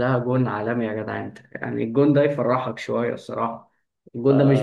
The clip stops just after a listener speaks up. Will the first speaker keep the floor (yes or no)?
no